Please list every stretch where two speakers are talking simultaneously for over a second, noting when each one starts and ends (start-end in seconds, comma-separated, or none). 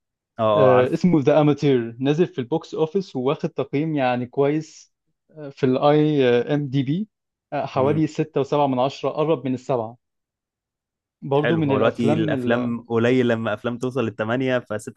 11.4-12.8